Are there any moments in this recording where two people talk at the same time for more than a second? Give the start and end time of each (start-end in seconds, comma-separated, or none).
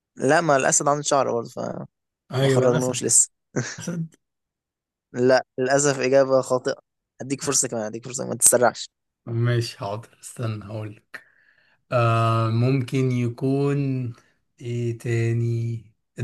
none